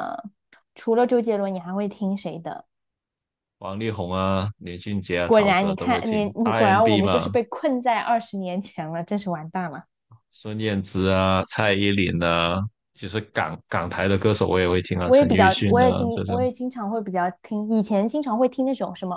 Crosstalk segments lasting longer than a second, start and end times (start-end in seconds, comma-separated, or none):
5.2-7.3, 15.0-16.5